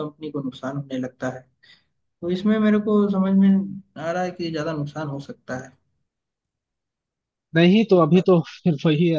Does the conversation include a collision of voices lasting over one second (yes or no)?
no